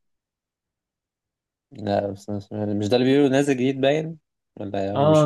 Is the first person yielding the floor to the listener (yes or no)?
yes